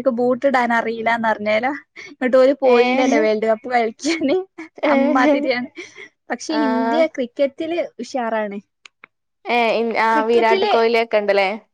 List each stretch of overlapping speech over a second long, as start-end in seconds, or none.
none